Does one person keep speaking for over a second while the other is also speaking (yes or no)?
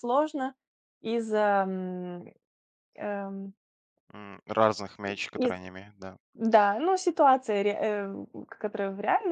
no